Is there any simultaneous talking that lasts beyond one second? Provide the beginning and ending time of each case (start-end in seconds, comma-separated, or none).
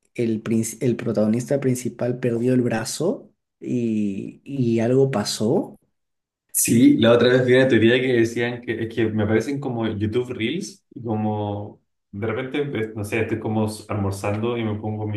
none